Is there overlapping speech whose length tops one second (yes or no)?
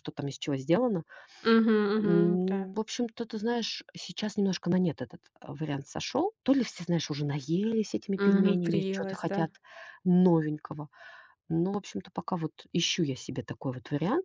yes